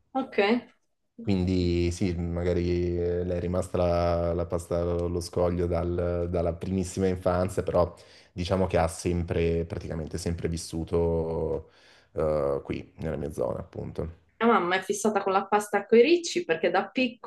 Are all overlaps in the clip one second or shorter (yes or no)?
yes